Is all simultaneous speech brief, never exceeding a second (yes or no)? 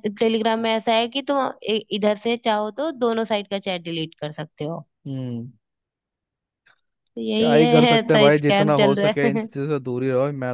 no